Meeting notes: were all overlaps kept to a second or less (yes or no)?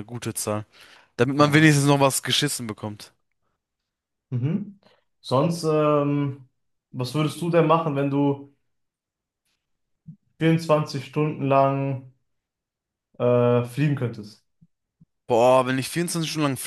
yes